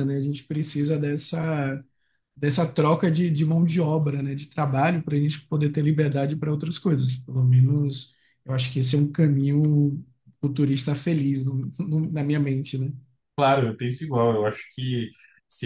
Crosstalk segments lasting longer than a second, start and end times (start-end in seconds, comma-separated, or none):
none